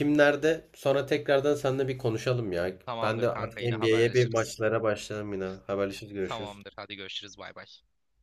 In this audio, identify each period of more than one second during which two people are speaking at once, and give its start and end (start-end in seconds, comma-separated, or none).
2.8-4.6